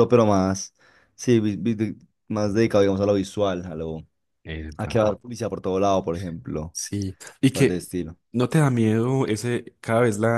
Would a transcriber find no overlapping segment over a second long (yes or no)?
yes